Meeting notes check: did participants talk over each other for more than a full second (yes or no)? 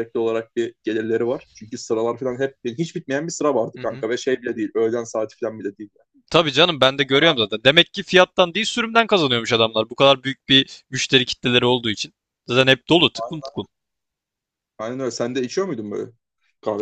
no